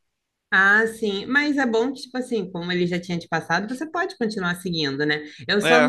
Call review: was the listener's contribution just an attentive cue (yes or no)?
yes